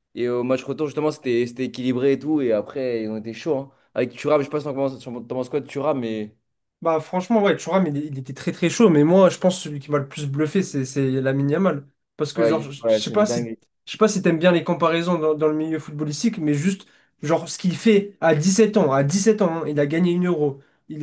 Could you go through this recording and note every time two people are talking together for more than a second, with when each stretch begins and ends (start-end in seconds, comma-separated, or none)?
12.3-13.6